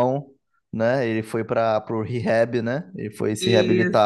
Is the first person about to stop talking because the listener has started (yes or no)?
yes